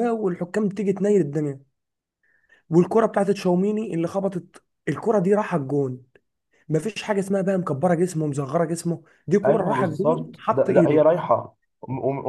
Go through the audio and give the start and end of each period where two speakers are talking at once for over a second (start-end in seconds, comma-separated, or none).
9.4-11.0